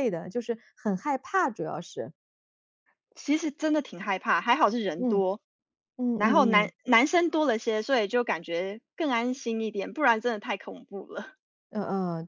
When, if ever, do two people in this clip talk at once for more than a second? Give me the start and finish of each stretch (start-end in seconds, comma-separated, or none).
none